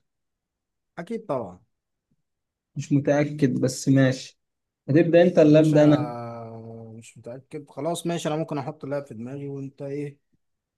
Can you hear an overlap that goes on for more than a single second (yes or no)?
no